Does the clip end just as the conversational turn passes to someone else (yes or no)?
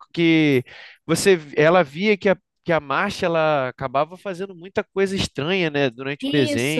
yes